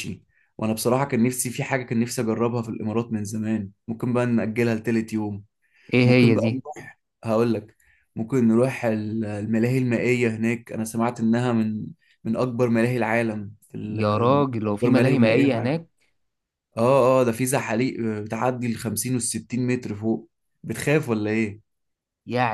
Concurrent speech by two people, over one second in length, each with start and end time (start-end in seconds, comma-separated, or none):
13.9-15.8